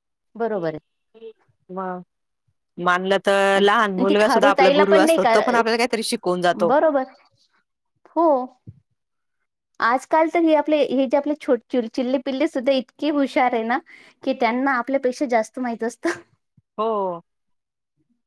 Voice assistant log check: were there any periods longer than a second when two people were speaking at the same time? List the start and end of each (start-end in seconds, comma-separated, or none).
3.4-5.4